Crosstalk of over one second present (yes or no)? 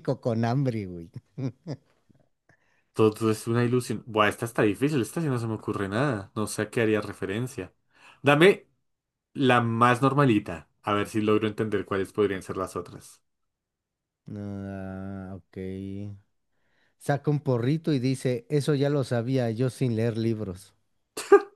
no